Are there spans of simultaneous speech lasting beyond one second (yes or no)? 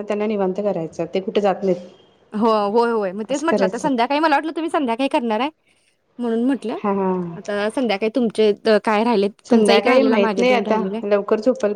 yes